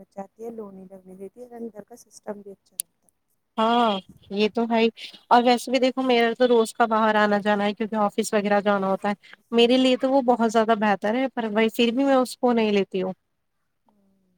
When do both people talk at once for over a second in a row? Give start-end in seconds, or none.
none